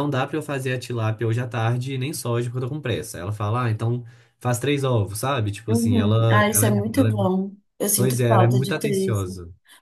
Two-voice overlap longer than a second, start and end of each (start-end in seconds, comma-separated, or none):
5.7-7.1, 7.9-9.3